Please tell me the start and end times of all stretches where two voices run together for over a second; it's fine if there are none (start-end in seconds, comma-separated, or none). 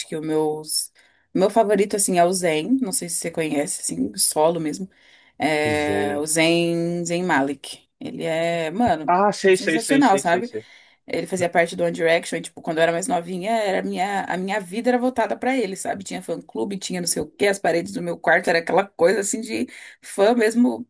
9.1-10.5